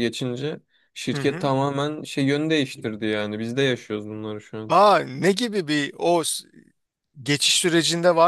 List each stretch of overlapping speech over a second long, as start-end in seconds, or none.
none